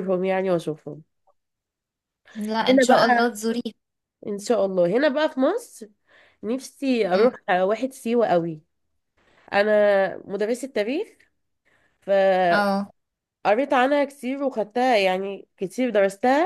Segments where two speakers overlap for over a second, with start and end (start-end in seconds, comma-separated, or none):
none